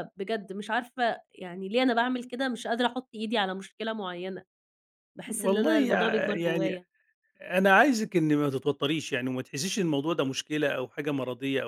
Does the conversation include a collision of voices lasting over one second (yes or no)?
yes